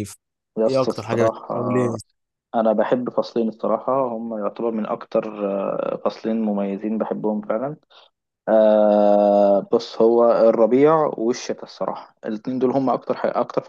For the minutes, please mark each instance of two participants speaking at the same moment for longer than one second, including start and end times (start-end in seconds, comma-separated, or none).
0.7-2.0